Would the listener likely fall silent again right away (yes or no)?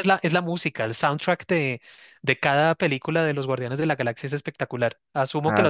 no